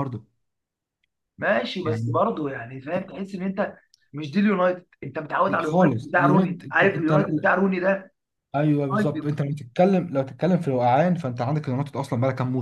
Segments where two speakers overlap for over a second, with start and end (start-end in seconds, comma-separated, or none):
5.5-7.5